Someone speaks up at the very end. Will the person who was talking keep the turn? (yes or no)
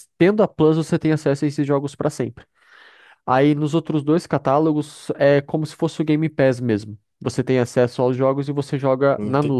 no